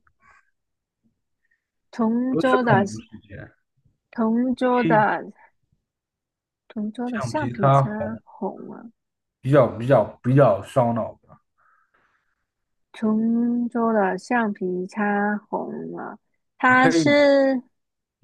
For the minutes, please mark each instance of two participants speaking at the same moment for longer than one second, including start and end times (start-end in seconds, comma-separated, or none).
7.0-8.2